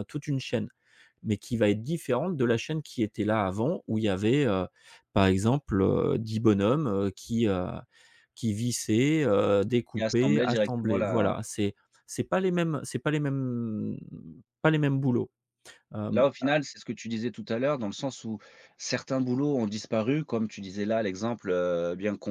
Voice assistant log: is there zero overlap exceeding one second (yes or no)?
no